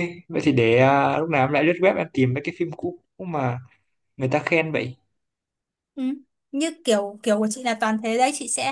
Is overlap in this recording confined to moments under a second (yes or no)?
yes